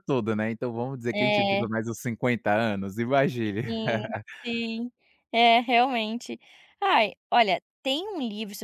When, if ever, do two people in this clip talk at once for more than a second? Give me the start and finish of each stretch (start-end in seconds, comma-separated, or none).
none